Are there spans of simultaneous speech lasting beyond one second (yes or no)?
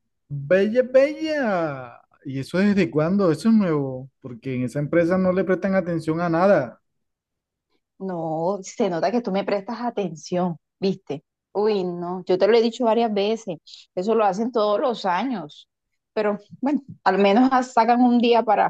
no